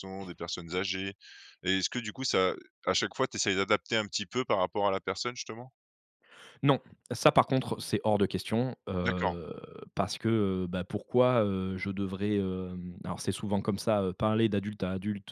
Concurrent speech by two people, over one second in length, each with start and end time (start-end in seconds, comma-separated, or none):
none